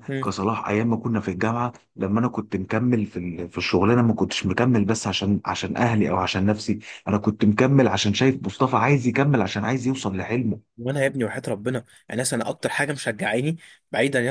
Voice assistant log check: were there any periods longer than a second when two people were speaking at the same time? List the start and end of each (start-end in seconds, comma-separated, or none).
none